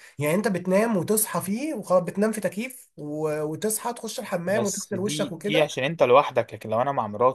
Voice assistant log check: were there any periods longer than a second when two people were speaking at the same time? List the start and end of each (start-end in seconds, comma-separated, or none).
4.5-5.8